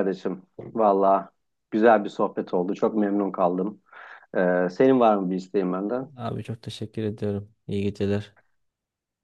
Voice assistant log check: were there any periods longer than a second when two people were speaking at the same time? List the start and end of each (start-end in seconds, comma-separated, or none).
none